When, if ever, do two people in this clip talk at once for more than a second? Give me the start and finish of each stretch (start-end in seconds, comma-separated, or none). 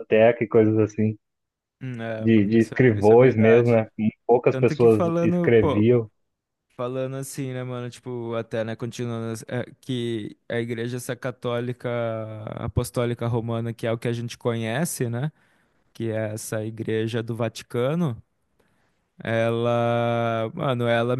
2.2-3.8, 4.5-5.8